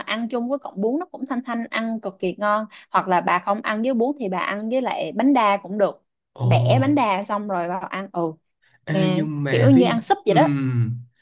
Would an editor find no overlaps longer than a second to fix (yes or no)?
no